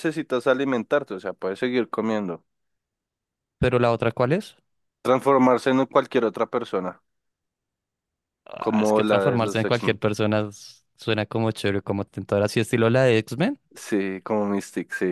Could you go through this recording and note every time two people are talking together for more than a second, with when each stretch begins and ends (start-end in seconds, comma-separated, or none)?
8.6-10.0